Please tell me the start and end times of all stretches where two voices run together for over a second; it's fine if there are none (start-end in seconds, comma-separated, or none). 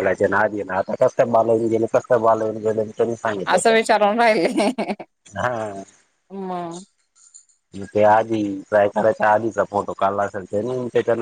none